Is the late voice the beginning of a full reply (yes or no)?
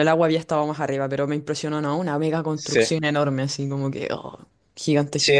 yes